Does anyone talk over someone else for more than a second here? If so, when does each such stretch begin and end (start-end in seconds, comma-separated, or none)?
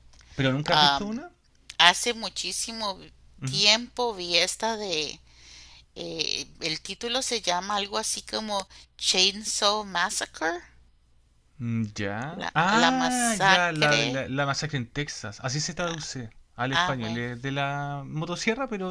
12.3-14.0